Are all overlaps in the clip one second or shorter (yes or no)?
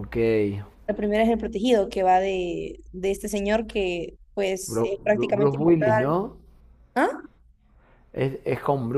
no